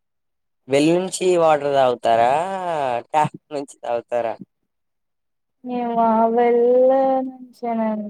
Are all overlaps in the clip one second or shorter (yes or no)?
yes